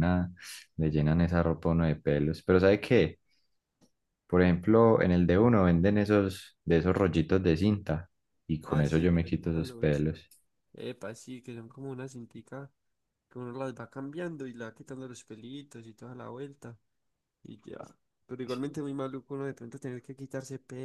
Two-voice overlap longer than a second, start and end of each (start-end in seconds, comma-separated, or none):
8.7-10.0